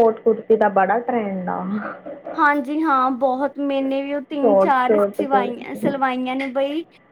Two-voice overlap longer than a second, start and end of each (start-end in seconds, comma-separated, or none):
4.4-5.8